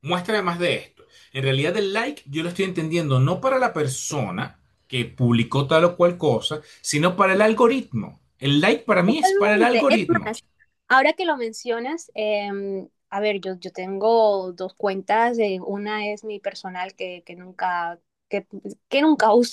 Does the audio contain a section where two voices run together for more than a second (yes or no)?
yes